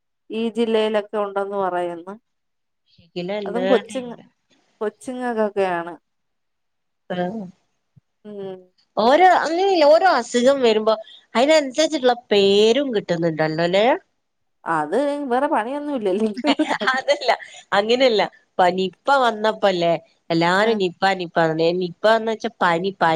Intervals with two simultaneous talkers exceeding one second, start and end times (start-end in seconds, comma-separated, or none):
none